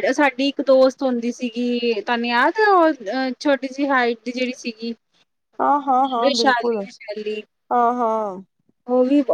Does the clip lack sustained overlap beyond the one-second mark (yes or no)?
yes